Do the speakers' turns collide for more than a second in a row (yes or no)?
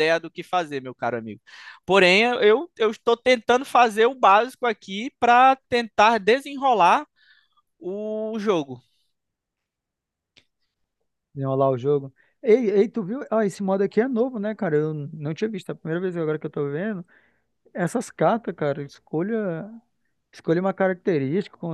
no